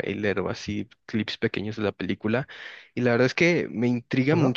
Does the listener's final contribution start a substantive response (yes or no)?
no